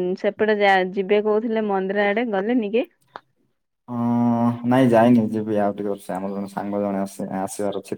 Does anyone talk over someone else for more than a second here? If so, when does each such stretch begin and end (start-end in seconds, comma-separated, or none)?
none